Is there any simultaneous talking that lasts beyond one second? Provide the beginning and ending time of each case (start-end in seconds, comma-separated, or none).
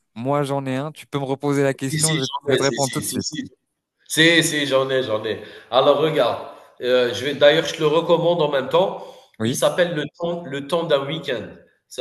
1.9-3.3